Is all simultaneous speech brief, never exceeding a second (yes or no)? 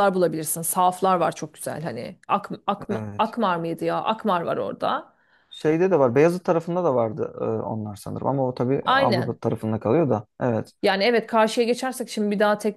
yes